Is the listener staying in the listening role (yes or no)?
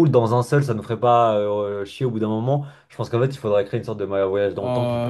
no